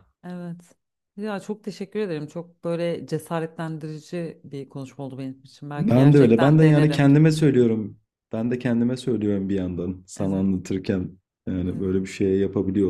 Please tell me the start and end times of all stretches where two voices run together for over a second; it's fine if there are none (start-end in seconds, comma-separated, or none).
5.8-7.1